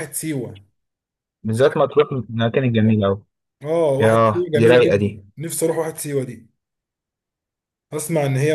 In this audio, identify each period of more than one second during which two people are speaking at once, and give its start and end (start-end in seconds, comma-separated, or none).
4.0-5.2